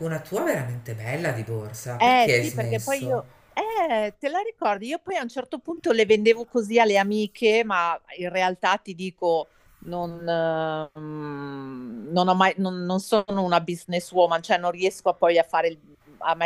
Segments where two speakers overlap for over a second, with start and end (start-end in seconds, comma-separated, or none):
2.0-3.2